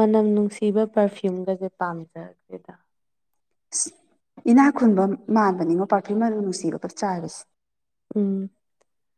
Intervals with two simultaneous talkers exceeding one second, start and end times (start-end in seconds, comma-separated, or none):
none